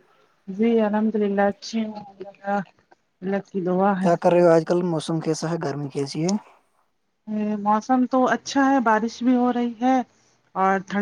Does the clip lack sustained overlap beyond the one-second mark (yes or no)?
yes